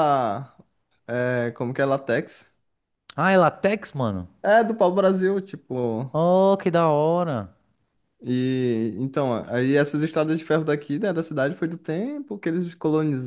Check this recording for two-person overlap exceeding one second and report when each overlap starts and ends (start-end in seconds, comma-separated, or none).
none